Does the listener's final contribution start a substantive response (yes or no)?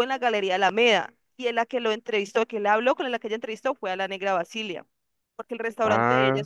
no